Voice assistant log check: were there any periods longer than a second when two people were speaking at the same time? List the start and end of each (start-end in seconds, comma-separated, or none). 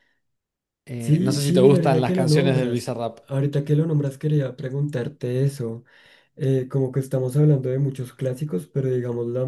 1.0-3.2